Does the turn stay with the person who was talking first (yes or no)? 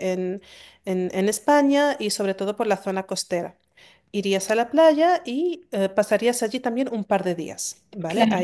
yes